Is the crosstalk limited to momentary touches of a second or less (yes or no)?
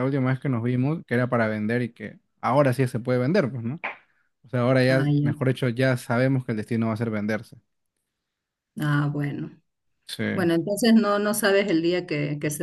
yes